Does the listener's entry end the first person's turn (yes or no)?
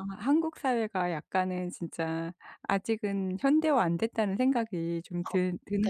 yes